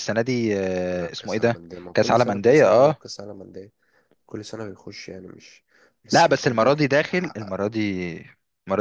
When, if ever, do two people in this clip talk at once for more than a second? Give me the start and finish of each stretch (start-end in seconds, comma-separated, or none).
0.9-3.0, 6.1-7.5